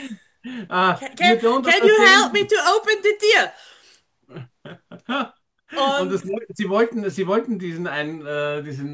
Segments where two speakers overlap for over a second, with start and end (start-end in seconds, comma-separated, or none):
0.9-2.5